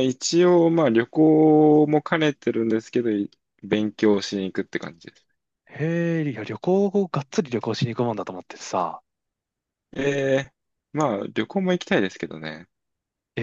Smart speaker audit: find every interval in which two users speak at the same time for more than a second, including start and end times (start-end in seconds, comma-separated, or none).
none